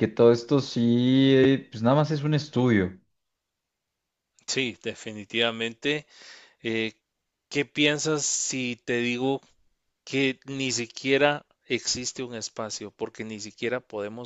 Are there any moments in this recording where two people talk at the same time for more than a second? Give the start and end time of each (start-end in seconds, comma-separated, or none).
none